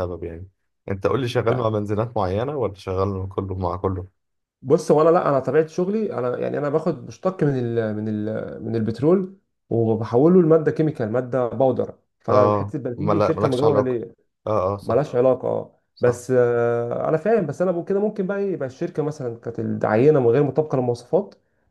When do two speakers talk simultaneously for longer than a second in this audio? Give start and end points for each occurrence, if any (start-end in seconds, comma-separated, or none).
12.3-14.0